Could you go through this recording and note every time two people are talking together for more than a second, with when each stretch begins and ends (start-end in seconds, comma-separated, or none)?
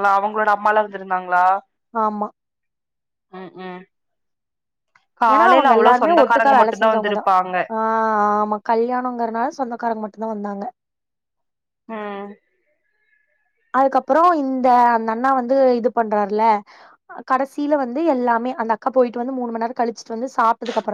5.3-7.2